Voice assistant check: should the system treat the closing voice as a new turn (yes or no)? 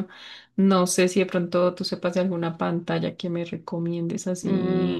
yes